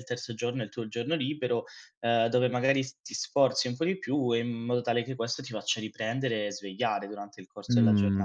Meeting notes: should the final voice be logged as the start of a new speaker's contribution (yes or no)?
yes